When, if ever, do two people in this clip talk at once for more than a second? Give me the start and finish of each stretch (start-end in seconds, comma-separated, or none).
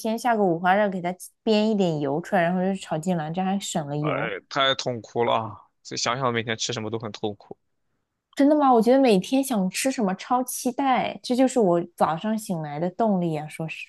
none